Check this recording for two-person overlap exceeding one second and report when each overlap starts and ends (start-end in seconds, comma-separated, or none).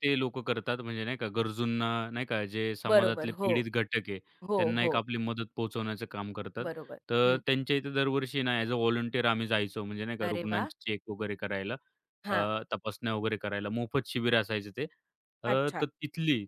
none